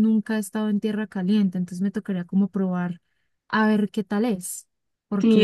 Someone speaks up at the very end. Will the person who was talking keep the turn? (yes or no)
no